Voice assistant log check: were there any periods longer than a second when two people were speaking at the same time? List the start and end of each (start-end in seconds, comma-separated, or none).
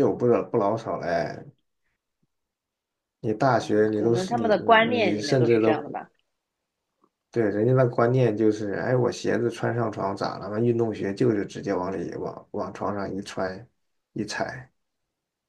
3.6-5.8